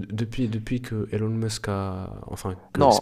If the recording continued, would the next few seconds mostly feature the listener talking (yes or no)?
yes